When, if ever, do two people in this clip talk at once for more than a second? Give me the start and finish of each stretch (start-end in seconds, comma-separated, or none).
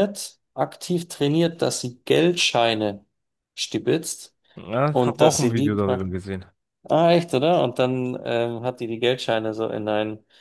4.9-6.1